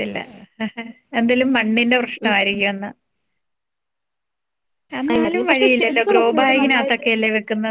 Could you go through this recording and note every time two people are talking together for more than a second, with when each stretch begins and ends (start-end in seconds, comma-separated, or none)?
5.1-7.0